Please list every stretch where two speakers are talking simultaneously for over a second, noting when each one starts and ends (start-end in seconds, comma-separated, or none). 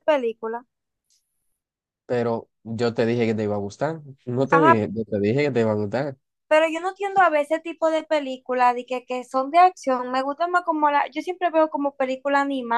none